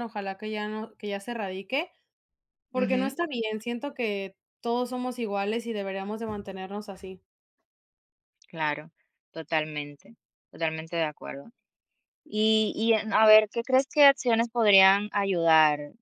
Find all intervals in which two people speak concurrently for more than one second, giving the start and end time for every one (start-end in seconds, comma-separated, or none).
none